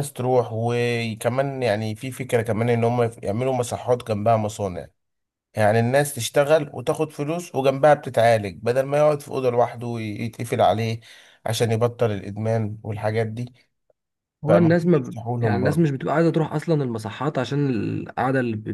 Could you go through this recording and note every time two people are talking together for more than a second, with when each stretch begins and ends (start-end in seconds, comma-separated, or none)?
14.5-15.9